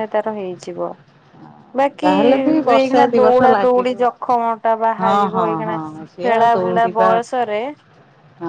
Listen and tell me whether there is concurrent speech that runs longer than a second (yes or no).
yes